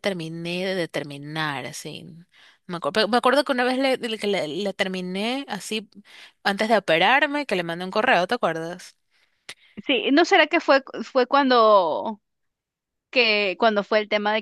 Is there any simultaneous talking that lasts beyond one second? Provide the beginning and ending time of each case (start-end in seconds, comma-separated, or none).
none